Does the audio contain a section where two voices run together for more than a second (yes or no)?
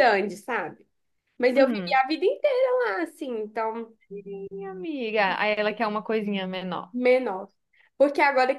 no